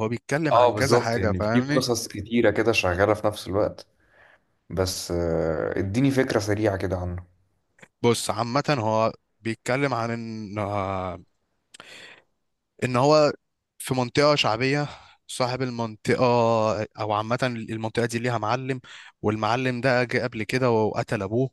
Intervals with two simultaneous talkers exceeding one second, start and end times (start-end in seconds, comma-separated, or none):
0.5-1.8